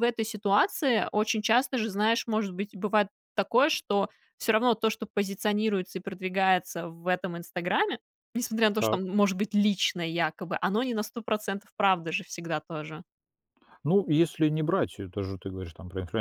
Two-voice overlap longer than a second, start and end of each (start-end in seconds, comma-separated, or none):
none